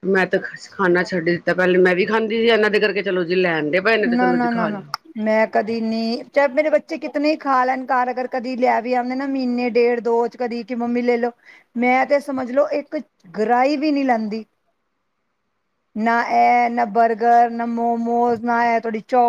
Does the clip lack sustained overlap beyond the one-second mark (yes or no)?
yes